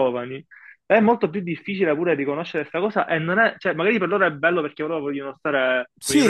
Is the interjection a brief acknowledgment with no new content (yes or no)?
no